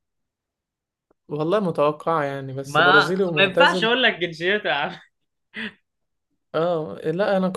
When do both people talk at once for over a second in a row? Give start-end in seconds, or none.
2.6-3.9